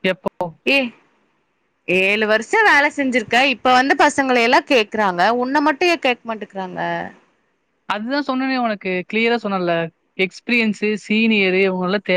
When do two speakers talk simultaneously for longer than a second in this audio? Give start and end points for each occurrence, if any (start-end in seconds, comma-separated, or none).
none